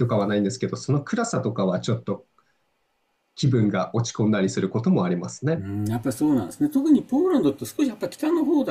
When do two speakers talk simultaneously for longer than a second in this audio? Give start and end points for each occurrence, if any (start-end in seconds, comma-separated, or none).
none